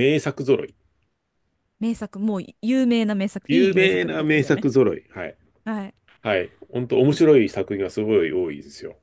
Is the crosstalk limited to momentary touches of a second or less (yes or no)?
no